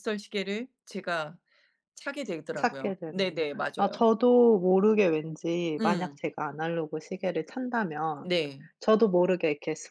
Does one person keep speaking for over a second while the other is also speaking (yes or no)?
yes